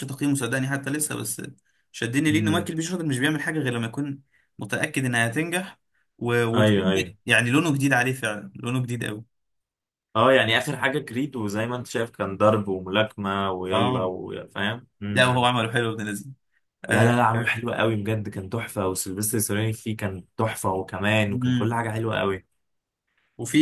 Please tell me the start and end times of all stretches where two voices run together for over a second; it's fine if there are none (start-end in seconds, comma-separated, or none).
none